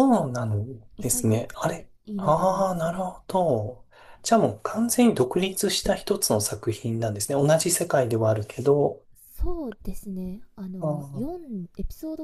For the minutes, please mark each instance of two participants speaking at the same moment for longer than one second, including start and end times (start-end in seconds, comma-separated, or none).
1.0-3.0